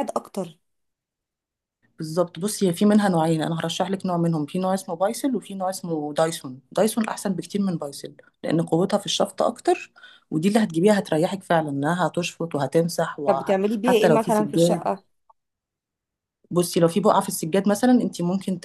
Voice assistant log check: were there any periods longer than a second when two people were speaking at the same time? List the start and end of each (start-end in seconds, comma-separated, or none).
13.3-14.9